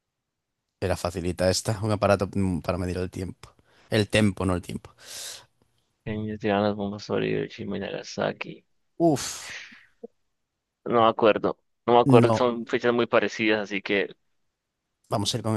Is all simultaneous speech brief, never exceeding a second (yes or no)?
yes